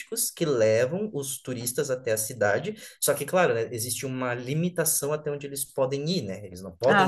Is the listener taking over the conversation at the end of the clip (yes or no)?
no